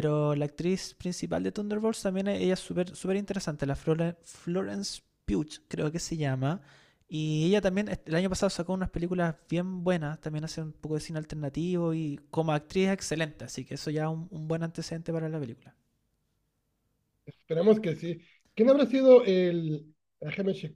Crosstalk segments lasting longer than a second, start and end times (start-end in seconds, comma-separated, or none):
none